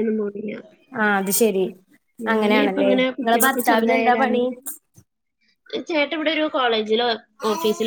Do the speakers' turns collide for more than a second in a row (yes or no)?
yes